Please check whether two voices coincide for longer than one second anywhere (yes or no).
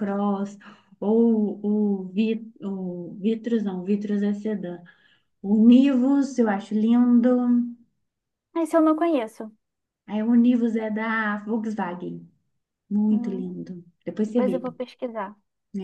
no